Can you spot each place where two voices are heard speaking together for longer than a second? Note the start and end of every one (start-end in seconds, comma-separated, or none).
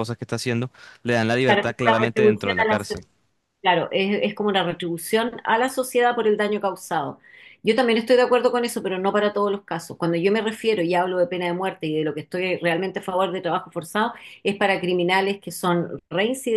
1.4-3.0